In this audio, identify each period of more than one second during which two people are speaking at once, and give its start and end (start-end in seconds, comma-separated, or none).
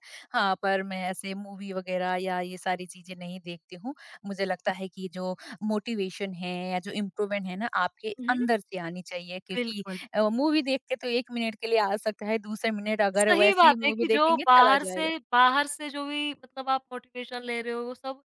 13.2-15.1